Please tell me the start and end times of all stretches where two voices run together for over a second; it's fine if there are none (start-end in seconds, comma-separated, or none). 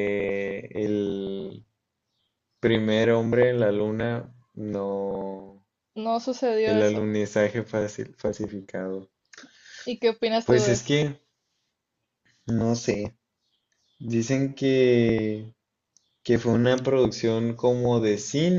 none